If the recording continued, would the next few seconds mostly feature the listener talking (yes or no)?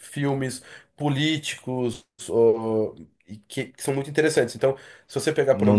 no